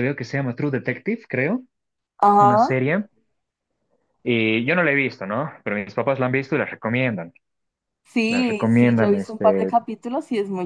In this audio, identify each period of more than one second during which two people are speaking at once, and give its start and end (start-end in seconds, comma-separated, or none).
8.3-9.8